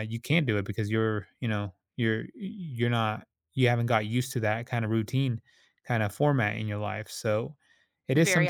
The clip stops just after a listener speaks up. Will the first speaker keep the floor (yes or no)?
no